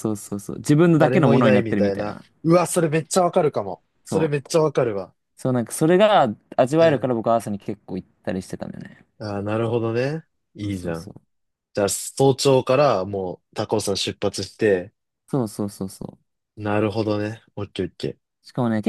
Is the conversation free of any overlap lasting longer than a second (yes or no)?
no